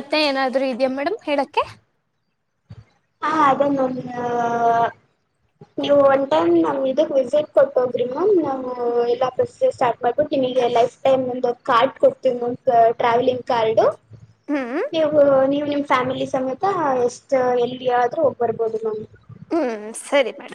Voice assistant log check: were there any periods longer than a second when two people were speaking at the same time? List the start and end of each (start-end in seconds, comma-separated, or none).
none